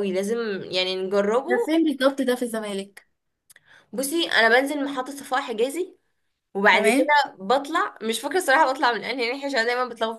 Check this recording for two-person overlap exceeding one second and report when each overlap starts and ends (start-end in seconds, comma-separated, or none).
none